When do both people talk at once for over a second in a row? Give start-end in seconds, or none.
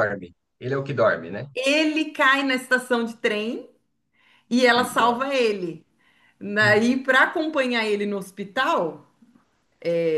none